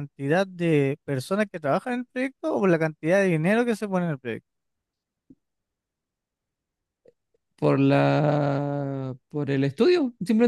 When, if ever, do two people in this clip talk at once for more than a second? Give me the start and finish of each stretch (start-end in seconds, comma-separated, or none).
none